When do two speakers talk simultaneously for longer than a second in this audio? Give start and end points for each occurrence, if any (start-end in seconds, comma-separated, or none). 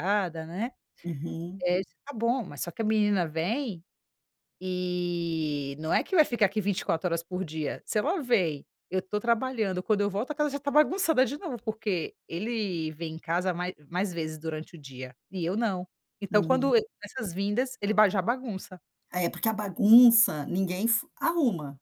none